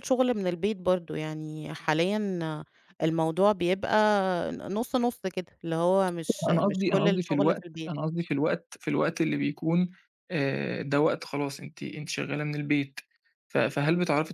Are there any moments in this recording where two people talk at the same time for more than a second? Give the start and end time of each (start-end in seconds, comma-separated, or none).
6.5-7.9